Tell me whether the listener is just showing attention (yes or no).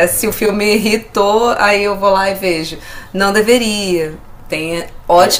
yes